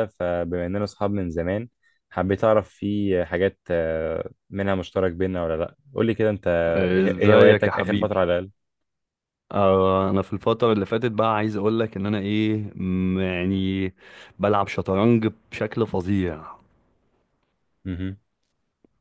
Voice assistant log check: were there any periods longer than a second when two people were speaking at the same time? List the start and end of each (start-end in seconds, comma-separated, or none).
6.9-8.2